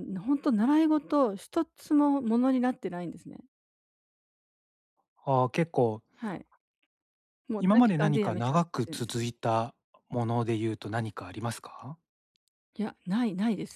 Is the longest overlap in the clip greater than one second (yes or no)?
yes